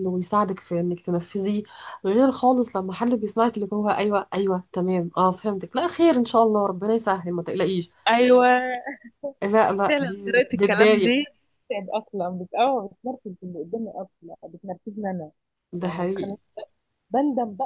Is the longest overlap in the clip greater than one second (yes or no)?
yes